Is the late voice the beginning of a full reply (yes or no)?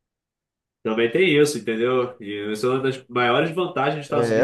yes